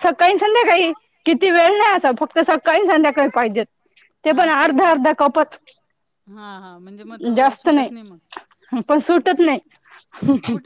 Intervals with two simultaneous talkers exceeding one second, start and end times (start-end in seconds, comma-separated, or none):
none